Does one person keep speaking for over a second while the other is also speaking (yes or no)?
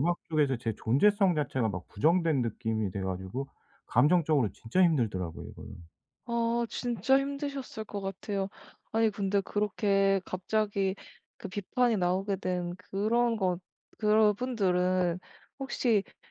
no